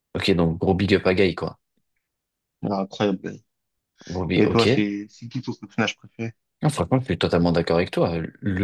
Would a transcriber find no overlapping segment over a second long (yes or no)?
yes